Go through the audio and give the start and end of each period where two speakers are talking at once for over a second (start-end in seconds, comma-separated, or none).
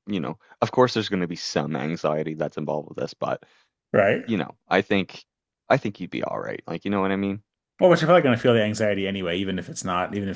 none